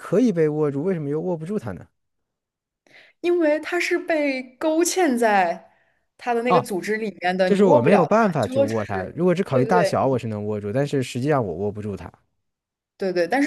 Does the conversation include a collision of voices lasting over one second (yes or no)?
yes